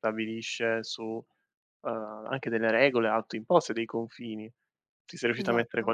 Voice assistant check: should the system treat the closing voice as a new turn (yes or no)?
no